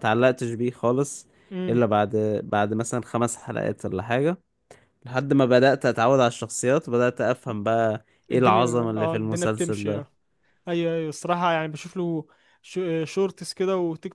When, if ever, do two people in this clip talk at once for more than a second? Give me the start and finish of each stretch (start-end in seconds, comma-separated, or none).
8.3-10.1